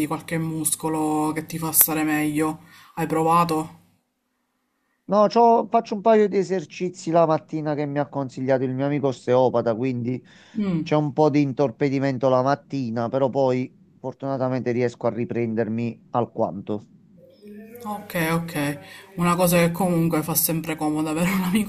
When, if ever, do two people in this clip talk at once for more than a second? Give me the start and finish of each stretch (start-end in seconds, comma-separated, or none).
none